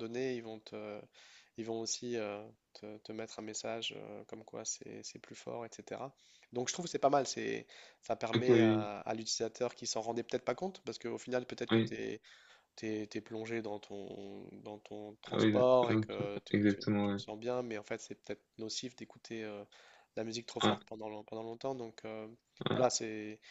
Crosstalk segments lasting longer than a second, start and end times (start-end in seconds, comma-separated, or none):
15.3-17.2